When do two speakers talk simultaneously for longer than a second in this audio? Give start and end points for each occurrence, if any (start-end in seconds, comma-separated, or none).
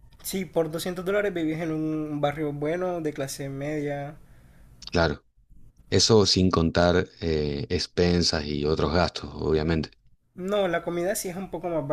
none